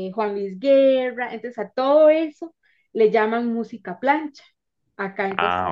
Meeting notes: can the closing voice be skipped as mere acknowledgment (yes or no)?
yes